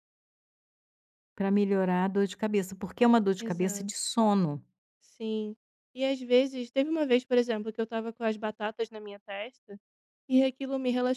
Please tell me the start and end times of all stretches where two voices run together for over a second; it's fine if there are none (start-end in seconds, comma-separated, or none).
none